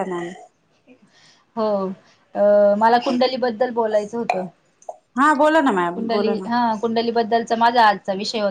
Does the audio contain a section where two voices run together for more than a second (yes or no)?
no